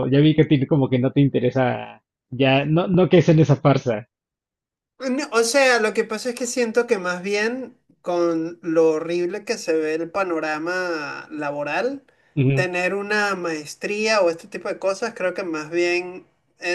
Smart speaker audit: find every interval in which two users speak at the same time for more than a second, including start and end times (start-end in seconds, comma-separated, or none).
none